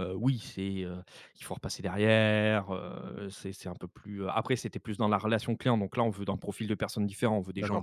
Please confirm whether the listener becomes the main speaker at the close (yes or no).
no